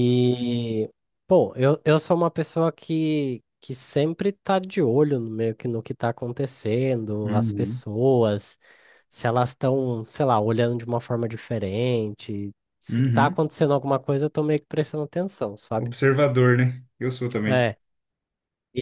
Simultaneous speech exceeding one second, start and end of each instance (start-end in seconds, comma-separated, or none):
none